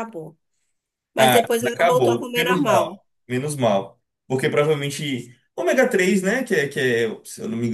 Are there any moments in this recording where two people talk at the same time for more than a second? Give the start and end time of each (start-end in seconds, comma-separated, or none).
1.2-3.0